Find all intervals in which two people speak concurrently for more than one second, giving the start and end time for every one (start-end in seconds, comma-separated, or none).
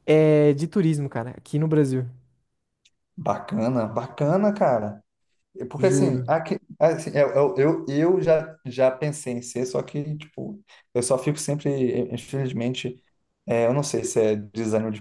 none